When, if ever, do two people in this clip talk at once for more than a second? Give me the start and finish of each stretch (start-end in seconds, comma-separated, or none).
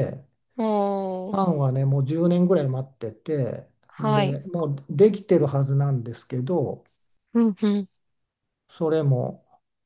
none